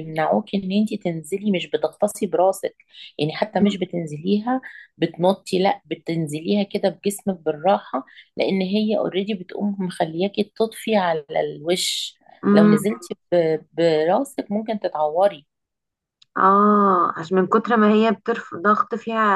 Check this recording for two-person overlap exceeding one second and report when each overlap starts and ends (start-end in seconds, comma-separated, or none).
none